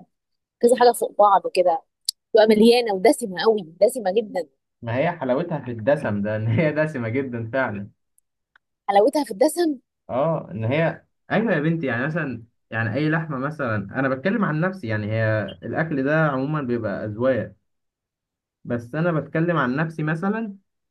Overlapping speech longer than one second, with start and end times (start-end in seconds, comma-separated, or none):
none